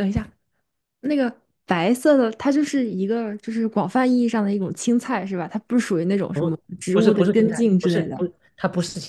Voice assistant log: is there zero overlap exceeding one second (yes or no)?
no